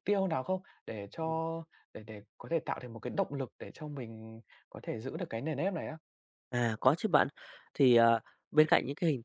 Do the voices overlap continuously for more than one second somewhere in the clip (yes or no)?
no